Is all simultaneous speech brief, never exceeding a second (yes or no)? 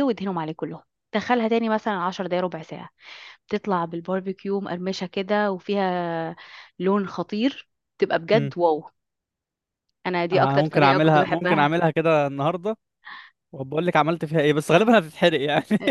no